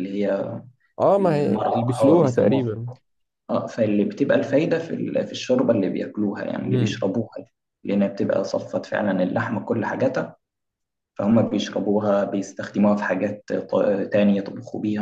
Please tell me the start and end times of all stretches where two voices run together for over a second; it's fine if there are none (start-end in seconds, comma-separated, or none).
1.2-2.6